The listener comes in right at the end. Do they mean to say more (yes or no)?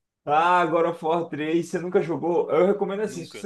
no